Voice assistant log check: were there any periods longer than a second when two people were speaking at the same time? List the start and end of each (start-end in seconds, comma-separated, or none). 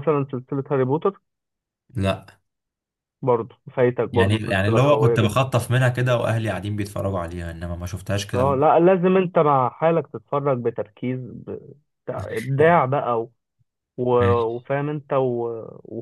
4.1-5.4